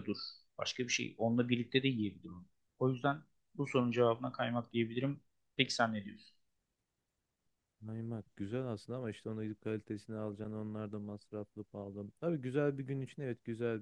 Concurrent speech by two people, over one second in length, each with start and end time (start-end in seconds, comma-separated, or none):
none